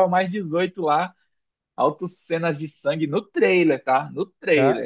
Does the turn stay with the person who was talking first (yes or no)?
no